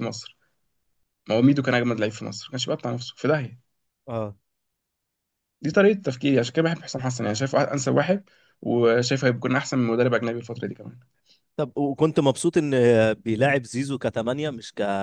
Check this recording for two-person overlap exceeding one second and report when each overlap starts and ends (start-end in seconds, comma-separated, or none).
none